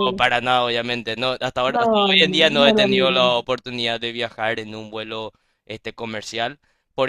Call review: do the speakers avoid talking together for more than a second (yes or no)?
no